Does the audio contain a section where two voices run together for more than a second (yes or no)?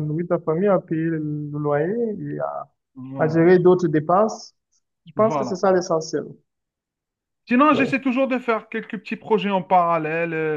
no